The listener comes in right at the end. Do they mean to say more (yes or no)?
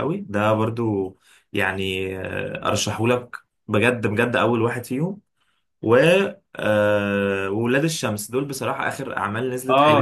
yes